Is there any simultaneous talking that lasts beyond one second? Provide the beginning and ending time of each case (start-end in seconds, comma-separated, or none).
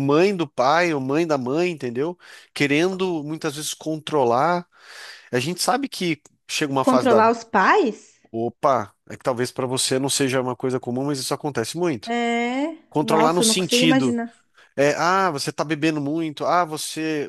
12.9-14.2